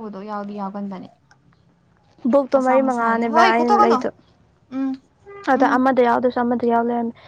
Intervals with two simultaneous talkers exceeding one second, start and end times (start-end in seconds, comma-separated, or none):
2.5-4.0